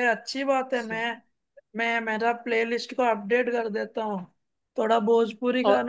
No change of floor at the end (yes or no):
no